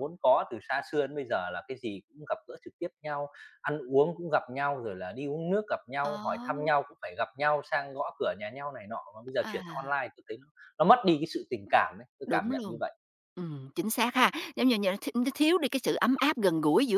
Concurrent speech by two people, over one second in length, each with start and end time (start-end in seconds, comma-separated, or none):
none